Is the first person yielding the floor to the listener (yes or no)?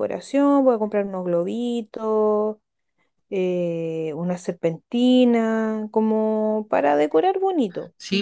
yes